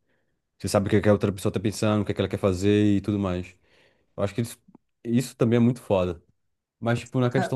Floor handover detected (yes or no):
no